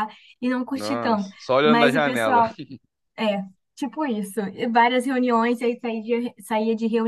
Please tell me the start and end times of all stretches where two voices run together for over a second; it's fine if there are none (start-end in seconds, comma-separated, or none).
0.7-2.4